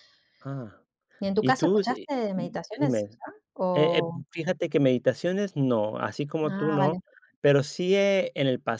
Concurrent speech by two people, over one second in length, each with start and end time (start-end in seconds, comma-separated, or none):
1.4-3.0